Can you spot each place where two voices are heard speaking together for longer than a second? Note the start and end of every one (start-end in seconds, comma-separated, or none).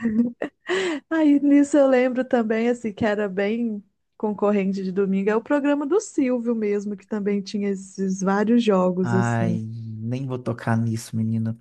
none